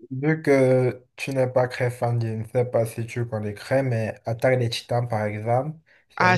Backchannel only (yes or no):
no